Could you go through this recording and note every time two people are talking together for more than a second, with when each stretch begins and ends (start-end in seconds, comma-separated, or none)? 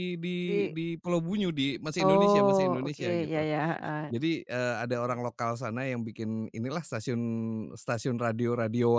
2.0-3.4